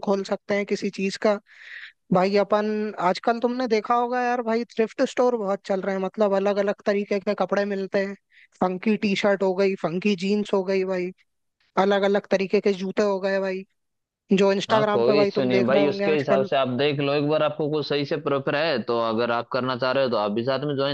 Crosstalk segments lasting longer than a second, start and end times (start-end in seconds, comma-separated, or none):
14.7-16.5